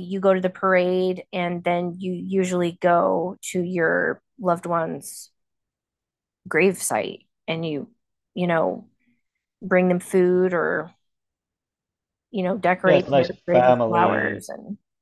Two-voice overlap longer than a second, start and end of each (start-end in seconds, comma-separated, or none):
12.8-14.5